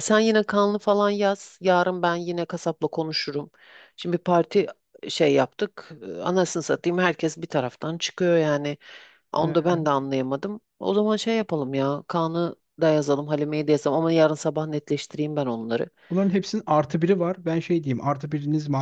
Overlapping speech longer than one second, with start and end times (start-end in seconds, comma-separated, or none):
none